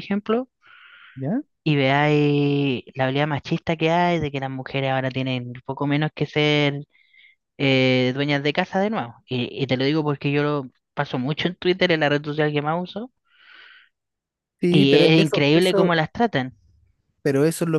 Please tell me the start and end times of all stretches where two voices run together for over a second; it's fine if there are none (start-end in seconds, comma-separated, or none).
14.7-15.9